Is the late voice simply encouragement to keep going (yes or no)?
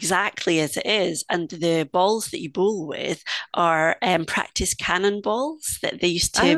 yes